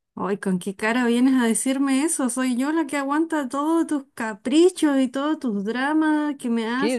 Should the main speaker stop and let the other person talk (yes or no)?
yes